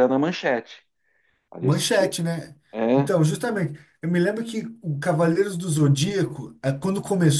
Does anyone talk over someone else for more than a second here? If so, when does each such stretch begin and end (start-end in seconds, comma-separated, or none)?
none